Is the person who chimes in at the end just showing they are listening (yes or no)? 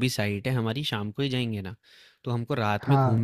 yes